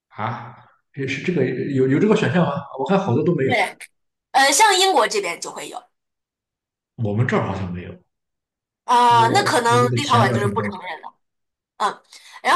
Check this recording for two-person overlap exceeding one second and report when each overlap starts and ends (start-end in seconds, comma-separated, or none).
9.1-10.9